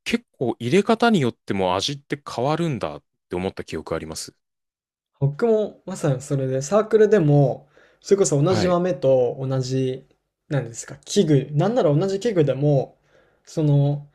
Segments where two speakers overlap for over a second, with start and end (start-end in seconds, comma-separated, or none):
none